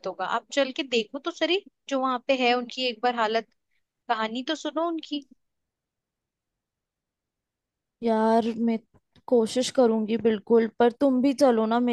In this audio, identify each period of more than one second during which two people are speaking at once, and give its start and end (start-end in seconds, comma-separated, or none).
none